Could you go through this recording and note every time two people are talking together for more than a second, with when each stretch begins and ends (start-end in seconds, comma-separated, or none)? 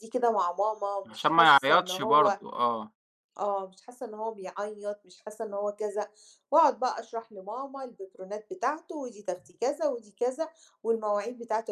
1.1-2.4